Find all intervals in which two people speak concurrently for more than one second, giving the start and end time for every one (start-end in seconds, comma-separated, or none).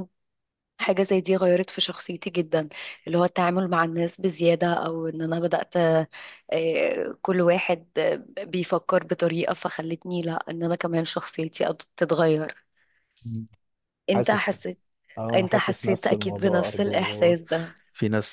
15.4-17.4